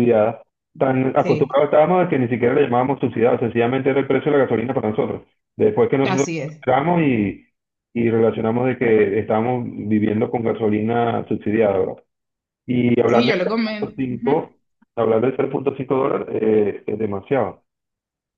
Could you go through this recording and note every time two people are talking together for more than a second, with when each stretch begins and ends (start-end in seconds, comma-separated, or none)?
13.1-14.5